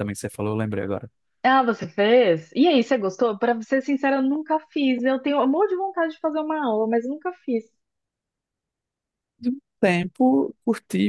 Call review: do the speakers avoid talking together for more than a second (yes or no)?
yes